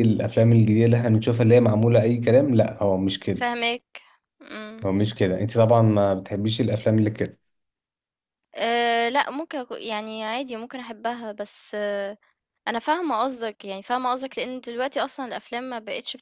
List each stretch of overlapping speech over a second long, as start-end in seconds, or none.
none